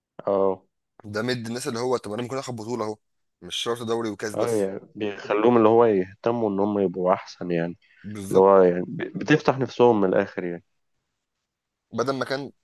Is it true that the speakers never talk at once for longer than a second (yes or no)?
yes